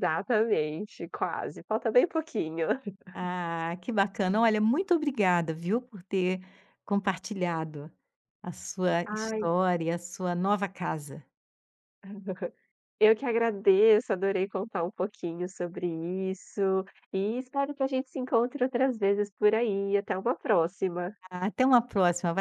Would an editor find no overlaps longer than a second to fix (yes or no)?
yes